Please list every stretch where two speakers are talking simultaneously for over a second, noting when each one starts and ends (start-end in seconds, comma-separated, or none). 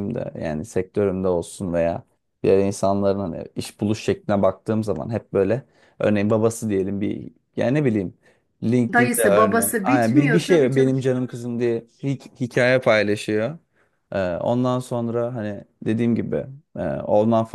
8.9-11.0